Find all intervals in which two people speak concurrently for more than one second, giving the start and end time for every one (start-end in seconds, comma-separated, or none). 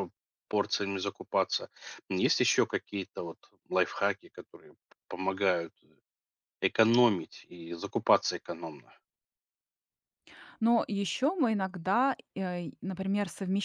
none